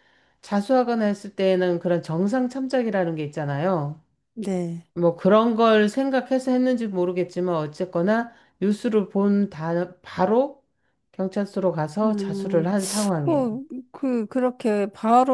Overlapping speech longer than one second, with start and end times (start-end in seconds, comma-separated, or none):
none